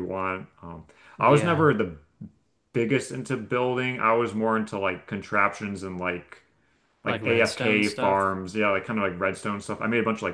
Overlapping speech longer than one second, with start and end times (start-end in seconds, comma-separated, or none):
7.1-8.3